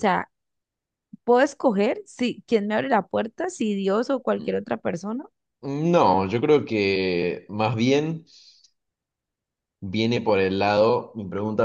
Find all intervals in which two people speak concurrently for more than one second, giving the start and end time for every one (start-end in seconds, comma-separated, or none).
none